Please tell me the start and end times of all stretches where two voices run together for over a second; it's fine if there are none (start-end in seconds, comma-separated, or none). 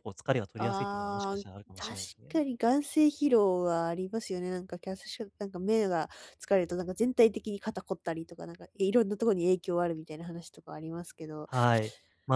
0.6-2.4